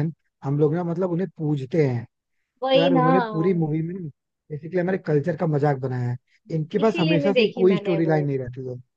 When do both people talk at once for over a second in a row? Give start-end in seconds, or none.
6.8-8.2